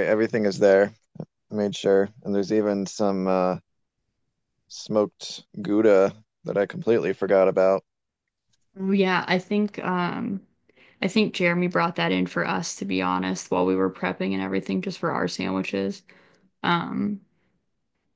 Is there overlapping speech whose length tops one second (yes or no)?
no